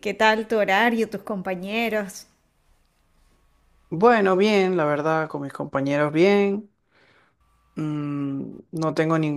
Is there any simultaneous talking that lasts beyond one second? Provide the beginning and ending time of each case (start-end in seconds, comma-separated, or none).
none